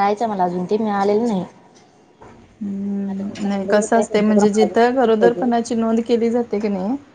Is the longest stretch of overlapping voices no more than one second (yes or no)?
no